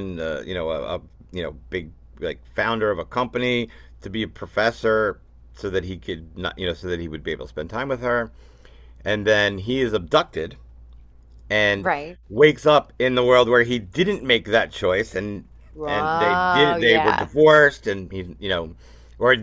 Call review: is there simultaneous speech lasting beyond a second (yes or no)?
yes